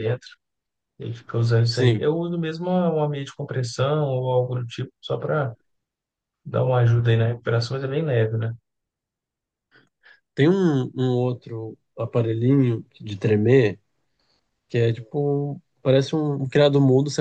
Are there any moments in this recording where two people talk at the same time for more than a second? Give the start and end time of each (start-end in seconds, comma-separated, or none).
none